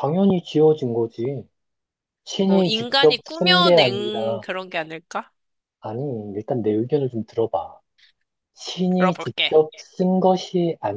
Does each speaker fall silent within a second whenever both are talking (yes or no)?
no